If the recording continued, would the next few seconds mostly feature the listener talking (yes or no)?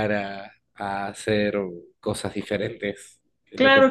yes